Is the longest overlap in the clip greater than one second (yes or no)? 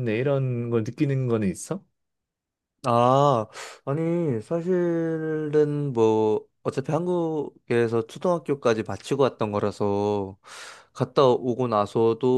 no